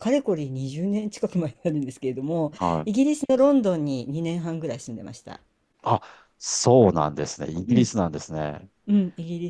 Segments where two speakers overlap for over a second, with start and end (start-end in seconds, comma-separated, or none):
none